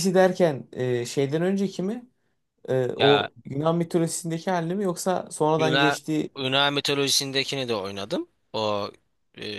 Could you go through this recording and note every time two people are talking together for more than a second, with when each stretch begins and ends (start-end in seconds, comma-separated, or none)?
none